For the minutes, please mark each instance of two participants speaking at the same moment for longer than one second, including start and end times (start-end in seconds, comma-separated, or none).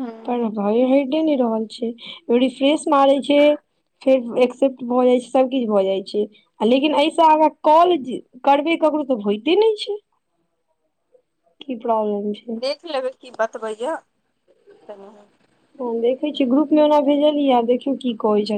none